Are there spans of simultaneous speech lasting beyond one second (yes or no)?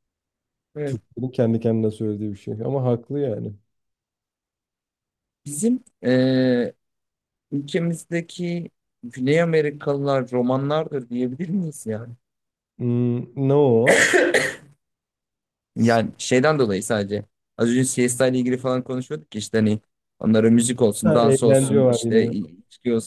yes